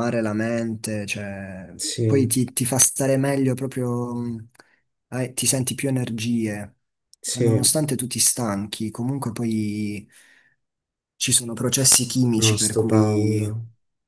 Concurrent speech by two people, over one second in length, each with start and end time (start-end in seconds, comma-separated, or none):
12.3-13.6